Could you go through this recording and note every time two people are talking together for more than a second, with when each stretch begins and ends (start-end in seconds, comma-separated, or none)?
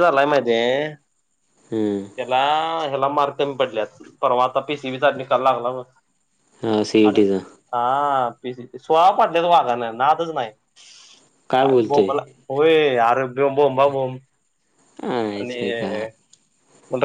none